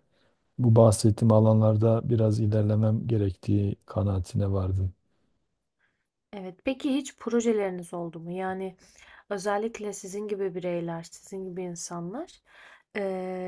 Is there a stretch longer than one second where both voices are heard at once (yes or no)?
no